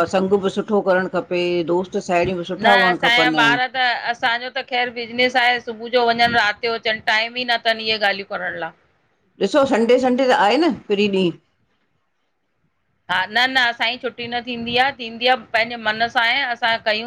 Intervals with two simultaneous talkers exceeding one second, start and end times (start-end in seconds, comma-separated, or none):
none